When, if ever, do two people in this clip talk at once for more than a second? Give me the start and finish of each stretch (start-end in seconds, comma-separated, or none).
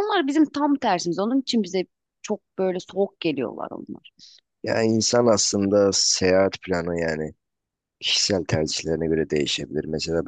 none